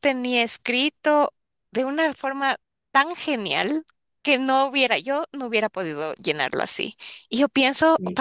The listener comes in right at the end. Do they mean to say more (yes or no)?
no